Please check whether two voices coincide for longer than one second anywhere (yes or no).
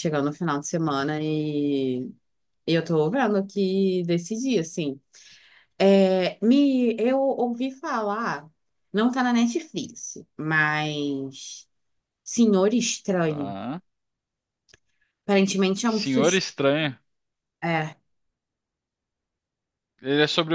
no